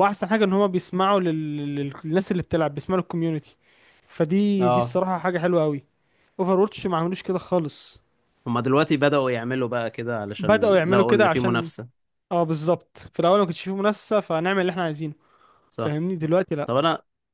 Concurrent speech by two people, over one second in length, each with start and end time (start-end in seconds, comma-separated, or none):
10.4-11.7